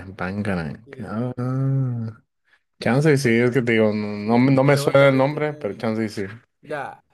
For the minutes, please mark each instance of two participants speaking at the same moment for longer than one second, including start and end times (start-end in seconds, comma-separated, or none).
4.2-5.9